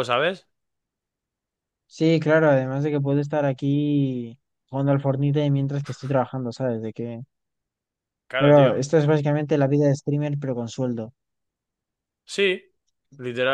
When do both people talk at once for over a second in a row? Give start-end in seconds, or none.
none